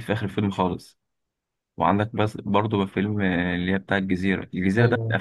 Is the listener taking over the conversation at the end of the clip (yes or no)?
no